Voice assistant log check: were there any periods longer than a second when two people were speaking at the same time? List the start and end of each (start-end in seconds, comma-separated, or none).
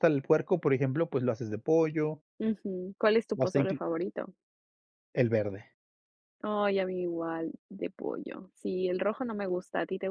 none